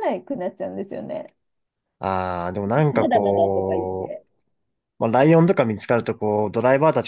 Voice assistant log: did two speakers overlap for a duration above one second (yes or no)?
yes